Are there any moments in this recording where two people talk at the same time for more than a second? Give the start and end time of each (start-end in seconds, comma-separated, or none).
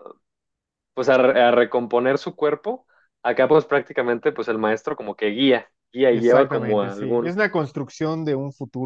6.1-7.3